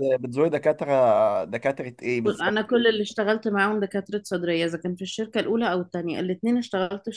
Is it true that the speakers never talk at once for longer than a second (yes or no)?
yes